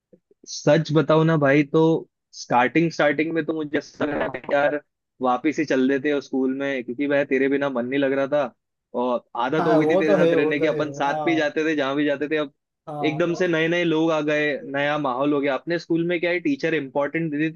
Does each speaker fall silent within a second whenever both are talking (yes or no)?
no